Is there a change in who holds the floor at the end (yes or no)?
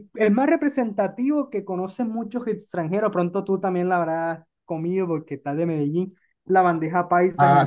yes